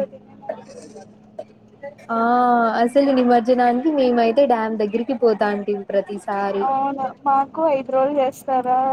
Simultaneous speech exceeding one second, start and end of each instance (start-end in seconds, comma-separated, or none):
none